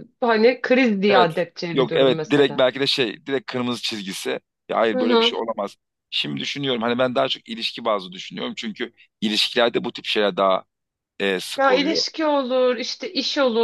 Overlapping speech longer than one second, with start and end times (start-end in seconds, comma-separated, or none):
1.1-2.6